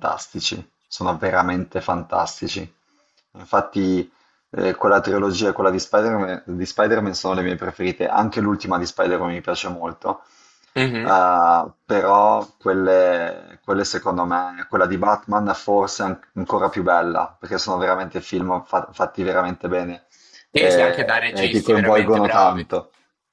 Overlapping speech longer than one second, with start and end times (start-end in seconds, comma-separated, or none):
20.6-22.6